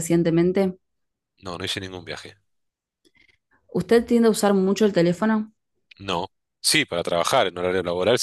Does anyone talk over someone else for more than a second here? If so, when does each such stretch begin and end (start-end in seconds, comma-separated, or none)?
none